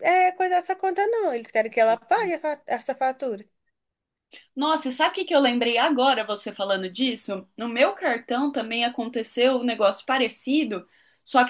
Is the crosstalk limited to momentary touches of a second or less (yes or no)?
yes